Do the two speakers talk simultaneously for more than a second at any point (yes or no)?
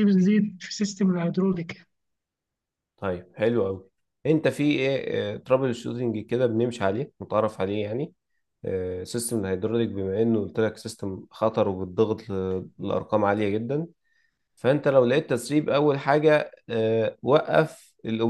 no